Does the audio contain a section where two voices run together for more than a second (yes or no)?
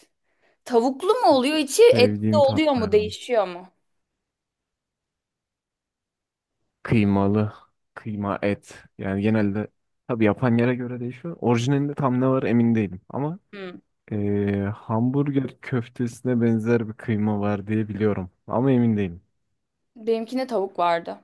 yes